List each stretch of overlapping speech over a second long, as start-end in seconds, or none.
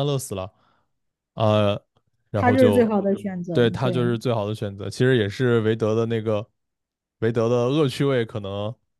none